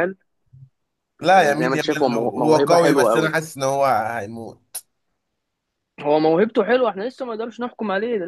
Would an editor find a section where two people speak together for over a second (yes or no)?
yes